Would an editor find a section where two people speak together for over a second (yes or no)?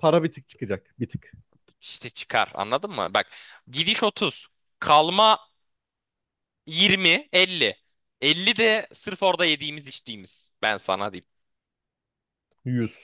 no